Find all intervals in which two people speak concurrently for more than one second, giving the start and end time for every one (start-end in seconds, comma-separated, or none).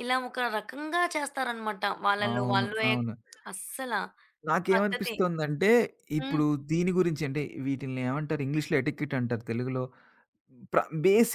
none